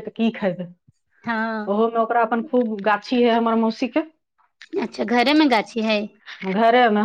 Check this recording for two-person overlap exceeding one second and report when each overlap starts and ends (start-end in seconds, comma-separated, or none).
none